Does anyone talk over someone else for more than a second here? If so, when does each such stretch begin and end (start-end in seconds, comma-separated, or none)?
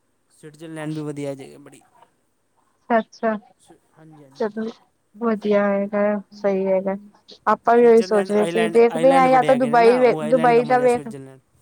7.8-11.1